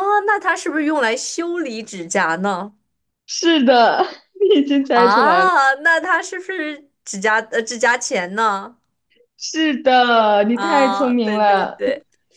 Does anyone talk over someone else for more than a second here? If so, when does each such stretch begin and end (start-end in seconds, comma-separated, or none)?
10.4-11.8